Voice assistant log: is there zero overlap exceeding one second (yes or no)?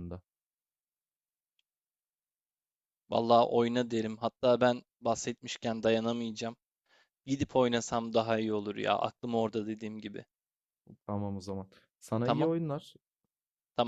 yes